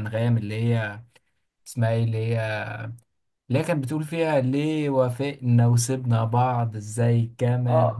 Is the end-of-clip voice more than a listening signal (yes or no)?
yes